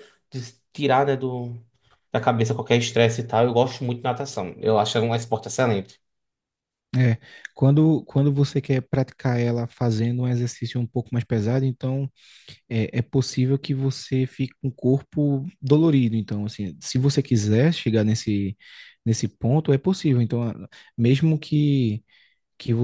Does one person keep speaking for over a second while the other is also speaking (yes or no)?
no